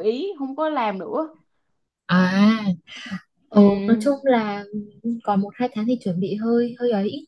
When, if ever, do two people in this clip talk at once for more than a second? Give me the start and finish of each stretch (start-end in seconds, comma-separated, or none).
none